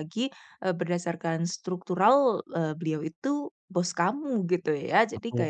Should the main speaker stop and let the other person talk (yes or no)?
no